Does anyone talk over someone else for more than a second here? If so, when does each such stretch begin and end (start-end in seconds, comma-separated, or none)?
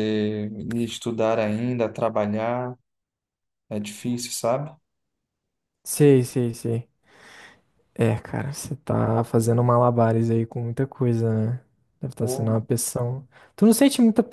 none